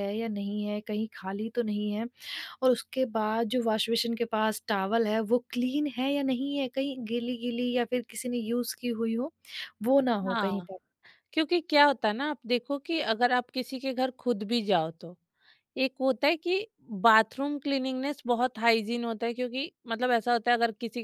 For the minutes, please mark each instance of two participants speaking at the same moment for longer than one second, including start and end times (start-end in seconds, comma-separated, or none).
none